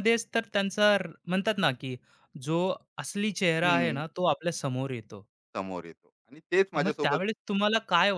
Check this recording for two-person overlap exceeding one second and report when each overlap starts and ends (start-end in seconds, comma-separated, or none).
none